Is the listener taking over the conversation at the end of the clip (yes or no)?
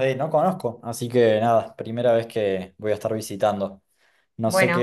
no